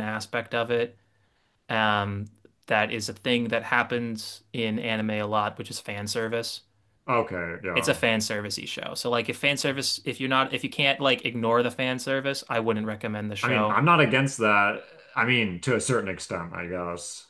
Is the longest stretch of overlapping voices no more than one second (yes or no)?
yes